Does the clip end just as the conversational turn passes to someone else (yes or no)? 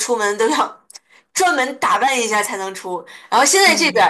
no